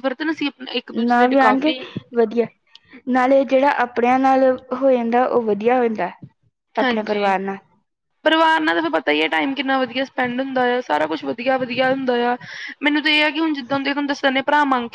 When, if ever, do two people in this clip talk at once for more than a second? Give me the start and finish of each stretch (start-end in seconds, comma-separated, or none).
none